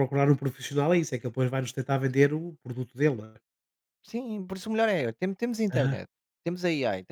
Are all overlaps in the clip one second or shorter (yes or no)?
yes